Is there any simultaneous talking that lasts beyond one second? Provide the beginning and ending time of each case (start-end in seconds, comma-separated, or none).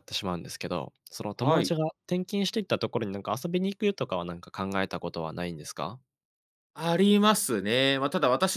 none